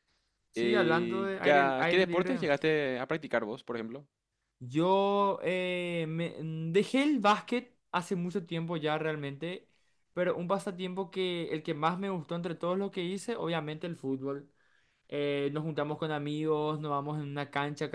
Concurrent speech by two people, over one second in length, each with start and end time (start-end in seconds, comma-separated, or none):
0.5-2.5